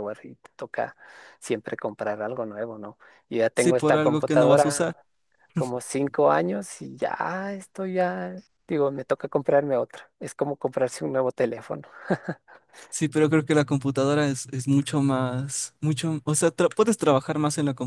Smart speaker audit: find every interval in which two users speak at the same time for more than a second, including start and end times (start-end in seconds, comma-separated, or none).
3.5-4.9